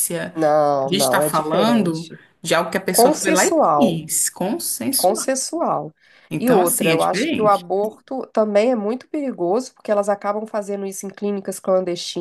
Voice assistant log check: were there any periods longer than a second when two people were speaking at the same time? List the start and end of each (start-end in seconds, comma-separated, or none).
0.8-2.2, 2.9-4.1, 6.4-7.7